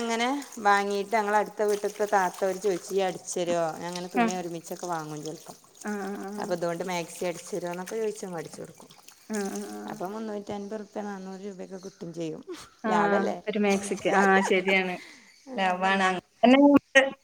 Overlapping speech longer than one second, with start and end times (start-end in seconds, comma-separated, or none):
none